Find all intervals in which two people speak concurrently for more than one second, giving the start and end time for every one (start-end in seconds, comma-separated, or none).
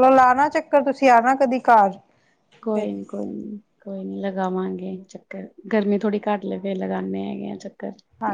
none